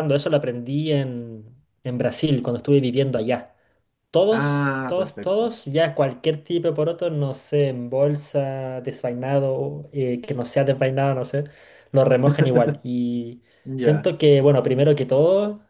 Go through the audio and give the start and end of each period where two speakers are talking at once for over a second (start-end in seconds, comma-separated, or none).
4.3-5.5